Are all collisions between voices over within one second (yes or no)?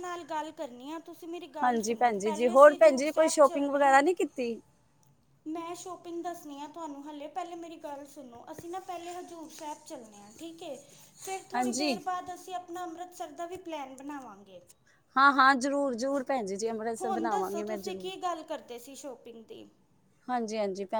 no